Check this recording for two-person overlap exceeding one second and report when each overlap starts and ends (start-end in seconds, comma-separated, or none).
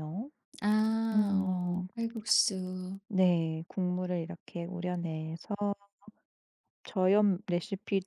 none